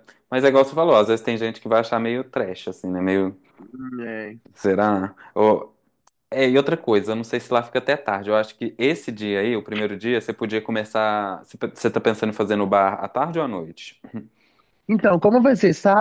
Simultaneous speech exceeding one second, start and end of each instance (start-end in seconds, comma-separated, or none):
none